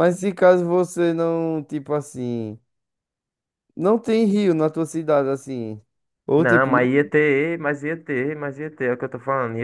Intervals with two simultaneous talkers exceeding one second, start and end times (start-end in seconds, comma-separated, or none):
none